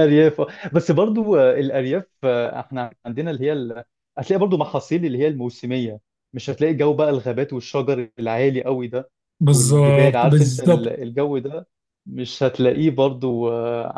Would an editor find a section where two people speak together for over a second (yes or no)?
yes